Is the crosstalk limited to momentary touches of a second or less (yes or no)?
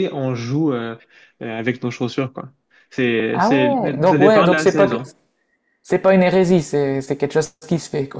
no